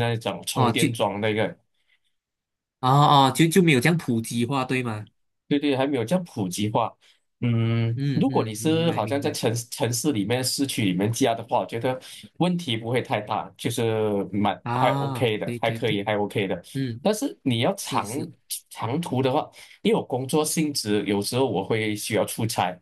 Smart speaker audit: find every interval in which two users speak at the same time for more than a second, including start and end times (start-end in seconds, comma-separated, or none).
8.0-9.4, 14.6-16.0